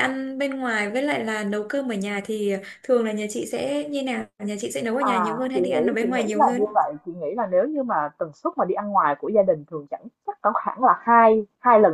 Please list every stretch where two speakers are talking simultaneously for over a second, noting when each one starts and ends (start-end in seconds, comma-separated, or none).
5.0-6.7